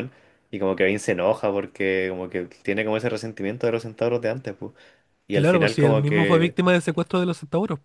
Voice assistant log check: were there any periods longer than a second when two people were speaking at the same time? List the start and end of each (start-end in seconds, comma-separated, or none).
5.3-6.5